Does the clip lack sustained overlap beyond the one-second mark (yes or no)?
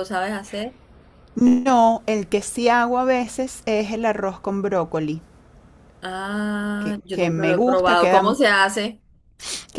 no